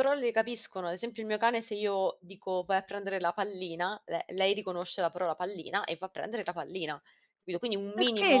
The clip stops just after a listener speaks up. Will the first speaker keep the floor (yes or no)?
no